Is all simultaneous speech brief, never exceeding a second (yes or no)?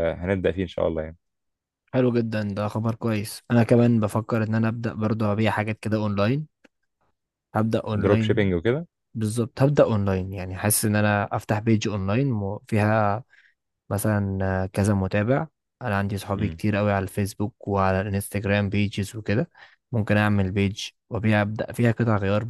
yes